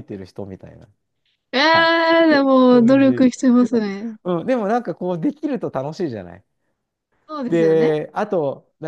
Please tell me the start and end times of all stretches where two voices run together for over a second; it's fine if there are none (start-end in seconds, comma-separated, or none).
none